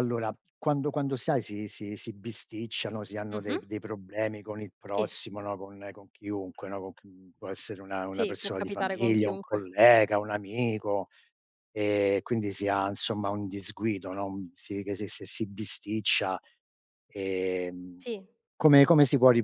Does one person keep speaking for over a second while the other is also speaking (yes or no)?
yes